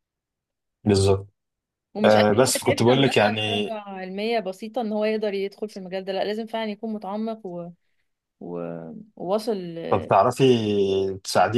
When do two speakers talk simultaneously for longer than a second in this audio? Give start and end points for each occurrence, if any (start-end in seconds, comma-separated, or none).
2.0-3.7